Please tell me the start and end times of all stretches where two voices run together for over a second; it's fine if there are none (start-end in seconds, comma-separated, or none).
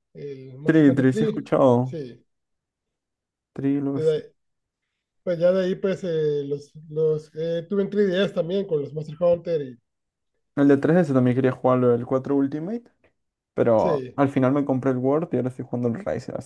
0.7-2.0